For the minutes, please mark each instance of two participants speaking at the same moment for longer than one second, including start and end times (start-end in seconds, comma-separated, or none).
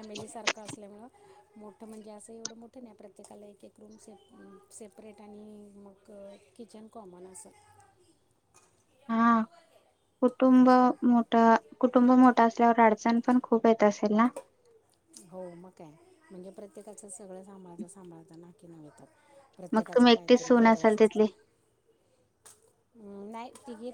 19.7-21.2